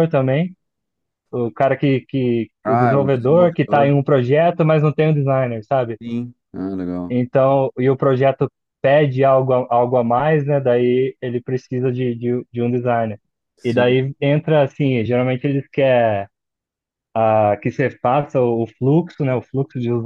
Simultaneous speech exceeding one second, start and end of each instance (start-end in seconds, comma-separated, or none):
2.6-3.9